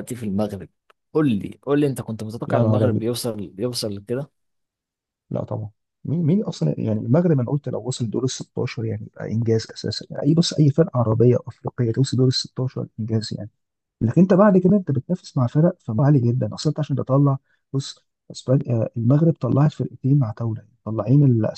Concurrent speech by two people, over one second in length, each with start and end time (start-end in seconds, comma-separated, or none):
none